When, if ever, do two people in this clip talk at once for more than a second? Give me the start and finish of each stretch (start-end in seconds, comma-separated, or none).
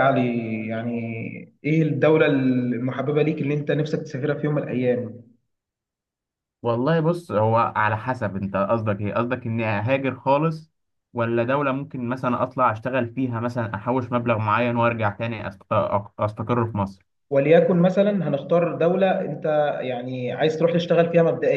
none